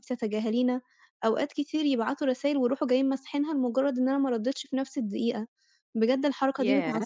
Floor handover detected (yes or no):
no